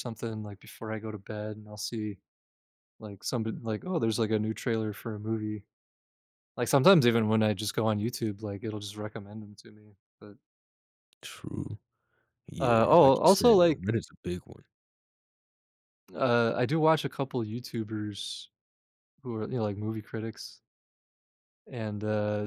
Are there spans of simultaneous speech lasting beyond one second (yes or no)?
yes